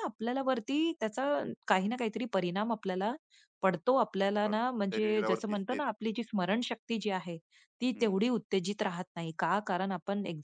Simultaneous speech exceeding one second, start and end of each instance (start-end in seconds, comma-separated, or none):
4.4-5.9